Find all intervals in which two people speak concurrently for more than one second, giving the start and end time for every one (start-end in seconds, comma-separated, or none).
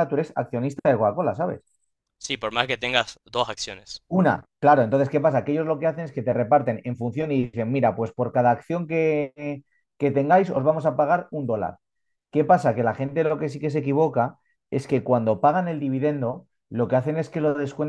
none